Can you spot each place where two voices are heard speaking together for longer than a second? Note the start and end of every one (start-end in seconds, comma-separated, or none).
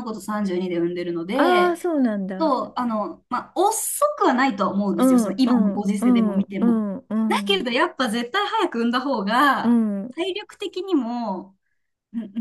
5.0-6.8